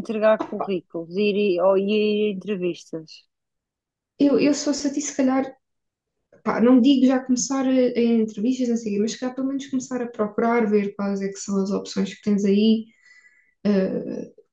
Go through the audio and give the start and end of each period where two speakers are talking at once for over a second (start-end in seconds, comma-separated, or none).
none